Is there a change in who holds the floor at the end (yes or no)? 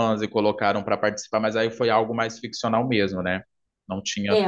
yes